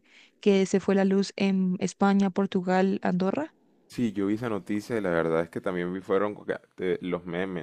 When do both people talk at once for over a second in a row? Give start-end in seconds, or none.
none